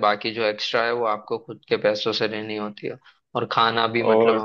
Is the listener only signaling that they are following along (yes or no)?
yes